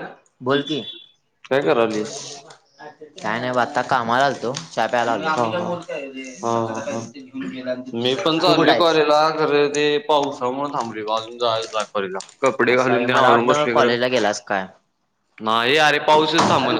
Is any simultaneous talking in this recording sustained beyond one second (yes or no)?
yes